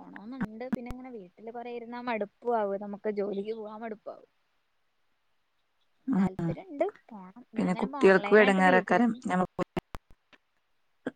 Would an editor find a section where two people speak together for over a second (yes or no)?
yes